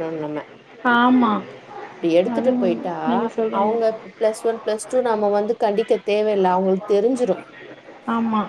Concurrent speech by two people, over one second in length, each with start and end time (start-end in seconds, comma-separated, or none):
none